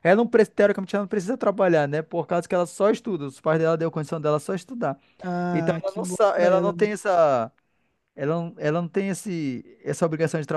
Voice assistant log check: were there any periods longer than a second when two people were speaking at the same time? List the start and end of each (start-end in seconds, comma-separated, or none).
5.5-6.9